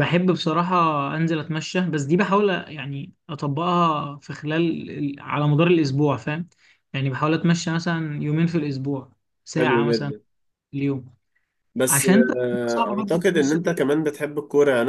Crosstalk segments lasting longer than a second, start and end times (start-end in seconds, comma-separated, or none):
11.9-13.8